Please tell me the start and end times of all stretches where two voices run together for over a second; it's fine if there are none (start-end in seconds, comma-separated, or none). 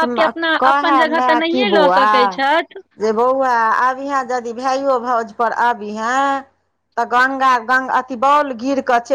none